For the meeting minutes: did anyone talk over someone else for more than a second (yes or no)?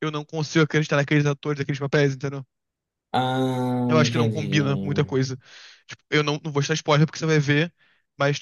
yes